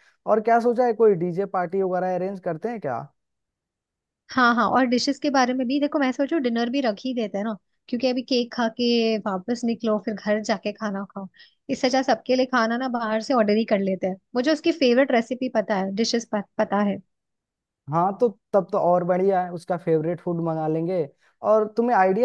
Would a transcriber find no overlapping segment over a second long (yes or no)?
yes